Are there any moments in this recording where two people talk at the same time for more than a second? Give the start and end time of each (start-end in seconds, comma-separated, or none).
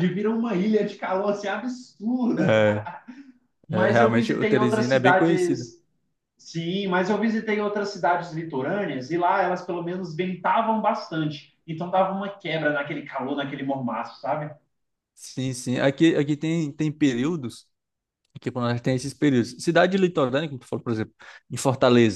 3.7-5.7